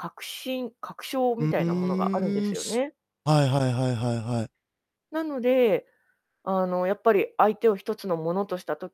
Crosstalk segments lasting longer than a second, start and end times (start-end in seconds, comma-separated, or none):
1.4-2.8